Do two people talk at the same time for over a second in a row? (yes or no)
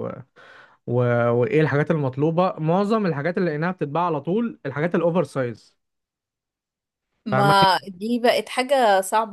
no